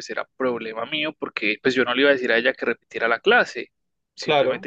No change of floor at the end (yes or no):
yes